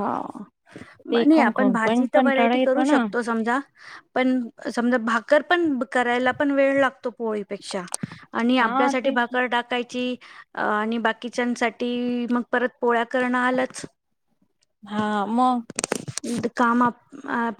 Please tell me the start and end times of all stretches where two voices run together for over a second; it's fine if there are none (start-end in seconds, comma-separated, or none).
1.1-3.0